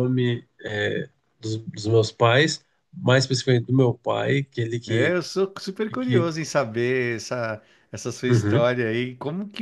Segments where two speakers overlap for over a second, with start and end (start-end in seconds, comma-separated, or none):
none